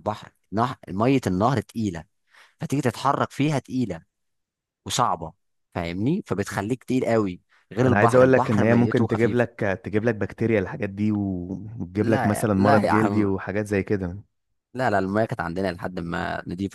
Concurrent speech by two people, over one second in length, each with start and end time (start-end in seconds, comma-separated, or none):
7.9-9.4, 12.0-13.3